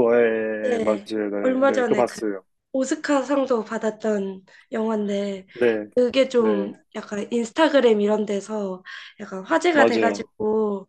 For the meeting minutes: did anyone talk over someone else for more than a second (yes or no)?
yes